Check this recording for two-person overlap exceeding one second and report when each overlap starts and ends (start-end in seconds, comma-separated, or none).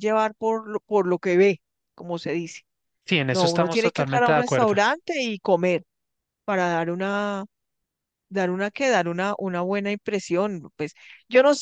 3.3-4.8